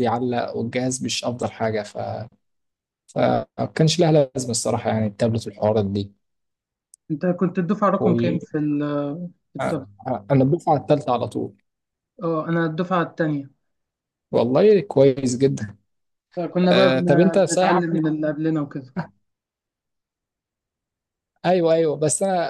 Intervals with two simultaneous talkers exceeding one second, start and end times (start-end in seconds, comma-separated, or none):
16.7-18.0